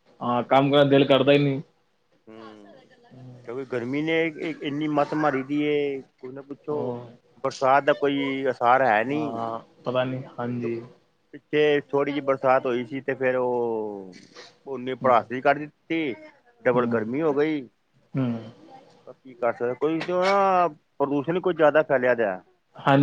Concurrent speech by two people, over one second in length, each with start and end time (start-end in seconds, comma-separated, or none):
none